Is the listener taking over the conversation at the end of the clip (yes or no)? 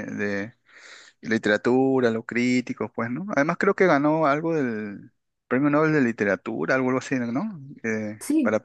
yes